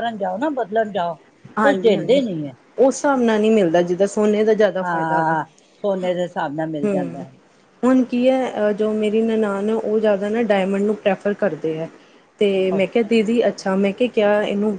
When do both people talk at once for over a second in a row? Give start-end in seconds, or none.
none